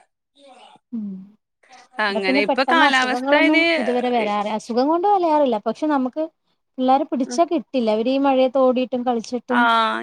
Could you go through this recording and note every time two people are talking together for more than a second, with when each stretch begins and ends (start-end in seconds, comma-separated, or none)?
2.1-3.6